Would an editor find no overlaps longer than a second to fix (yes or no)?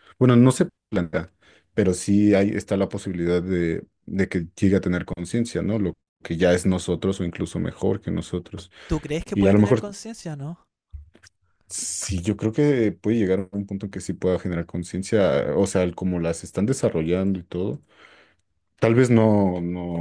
yes